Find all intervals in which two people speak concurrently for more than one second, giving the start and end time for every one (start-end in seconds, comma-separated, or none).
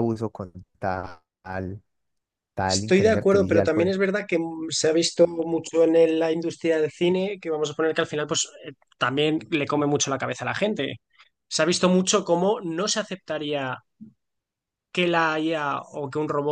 2.6-4.0